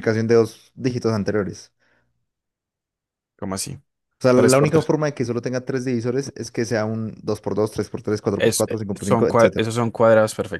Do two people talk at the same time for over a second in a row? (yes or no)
yes